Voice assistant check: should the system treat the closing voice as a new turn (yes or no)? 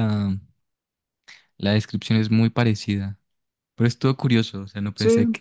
no